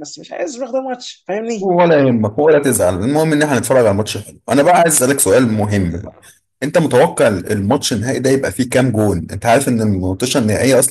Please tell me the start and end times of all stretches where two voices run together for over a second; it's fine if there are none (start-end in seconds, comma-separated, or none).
none